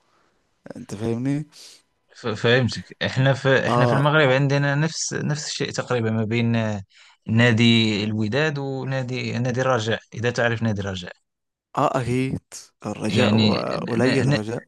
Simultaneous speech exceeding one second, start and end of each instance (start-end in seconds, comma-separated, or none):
none